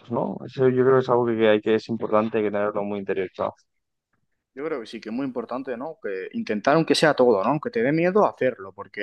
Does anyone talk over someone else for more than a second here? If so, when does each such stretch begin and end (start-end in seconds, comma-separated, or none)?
none